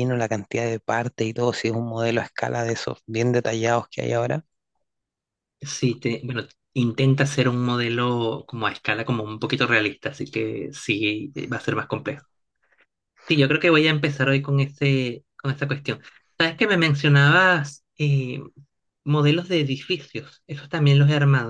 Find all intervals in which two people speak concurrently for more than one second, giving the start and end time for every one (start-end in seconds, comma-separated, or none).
none